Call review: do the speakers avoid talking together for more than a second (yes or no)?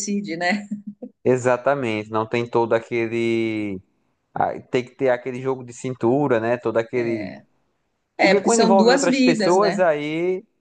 no